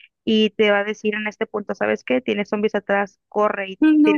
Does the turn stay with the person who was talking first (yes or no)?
yes